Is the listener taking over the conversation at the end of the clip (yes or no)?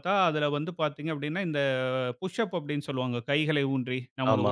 no